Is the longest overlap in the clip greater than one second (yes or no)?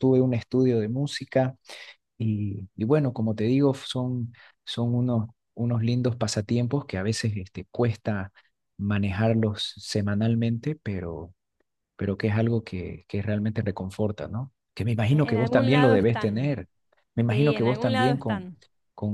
yes